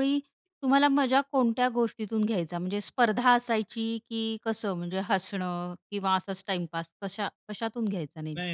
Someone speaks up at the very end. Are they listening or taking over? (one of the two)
taking over